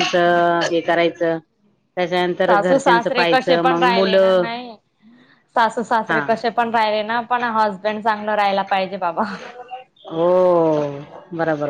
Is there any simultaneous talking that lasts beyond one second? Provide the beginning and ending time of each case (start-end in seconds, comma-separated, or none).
2.5-4.5